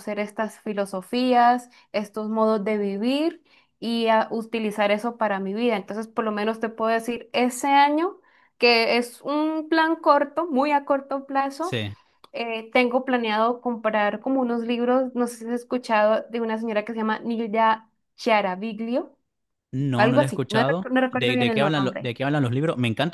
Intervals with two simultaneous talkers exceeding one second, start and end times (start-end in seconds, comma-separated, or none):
19.9-22.1